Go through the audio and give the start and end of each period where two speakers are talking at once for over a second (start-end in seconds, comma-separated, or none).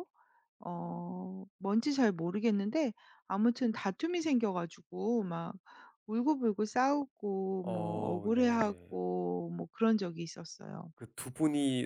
7.6-8.9